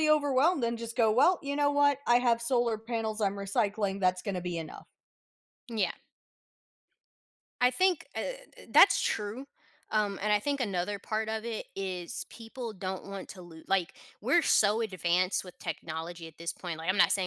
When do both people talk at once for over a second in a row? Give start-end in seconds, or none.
none